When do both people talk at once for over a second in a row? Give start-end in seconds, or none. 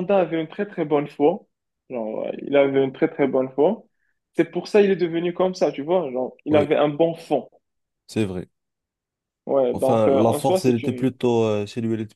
9.7-11.2